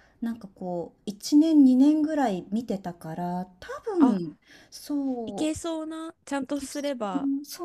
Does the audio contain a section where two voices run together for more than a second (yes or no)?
no